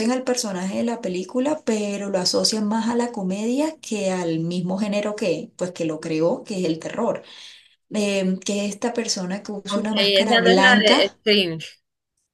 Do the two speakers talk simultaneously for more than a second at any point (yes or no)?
yes